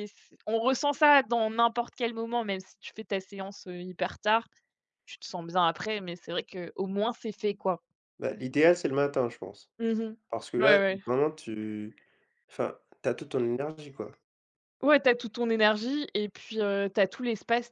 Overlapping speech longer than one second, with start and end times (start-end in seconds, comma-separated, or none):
none